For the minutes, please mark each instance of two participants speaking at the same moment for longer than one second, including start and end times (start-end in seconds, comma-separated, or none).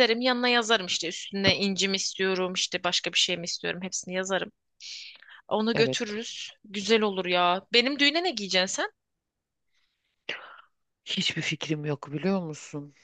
none